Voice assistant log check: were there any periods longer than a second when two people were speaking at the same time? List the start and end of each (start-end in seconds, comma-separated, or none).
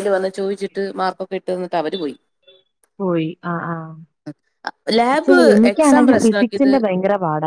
5.1-6.7